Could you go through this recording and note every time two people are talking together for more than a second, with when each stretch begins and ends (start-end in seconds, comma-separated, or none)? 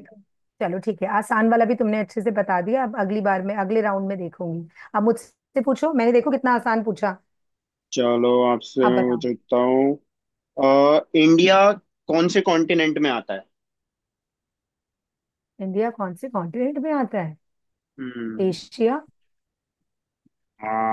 none